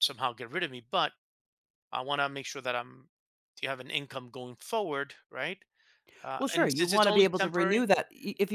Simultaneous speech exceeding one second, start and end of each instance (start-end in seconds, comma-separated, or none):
6.4-7.9